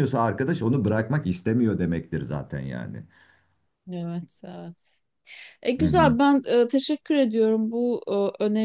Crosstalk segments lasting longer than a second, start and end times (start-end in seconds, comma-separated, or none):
none